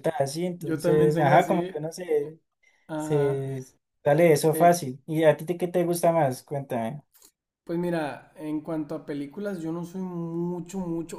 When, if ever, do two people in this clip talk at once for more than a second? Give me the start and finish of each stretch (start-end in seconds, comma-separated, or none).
0.6-1.8